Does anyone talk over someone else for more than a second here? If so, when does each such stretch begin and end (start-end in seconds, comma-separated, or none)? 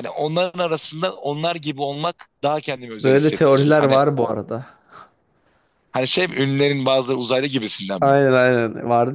3.0-4.4